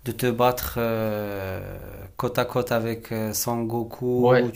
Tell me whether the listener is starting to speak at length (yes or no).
yes